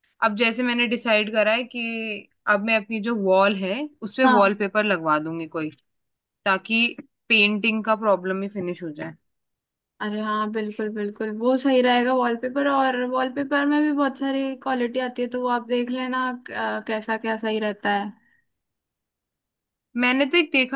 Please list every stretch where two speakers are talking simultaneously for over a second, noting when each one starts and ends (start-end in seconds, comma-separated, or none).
none